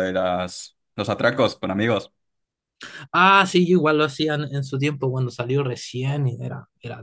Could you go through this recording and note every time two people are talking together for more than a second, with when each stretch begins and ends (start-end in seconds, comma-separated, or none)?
none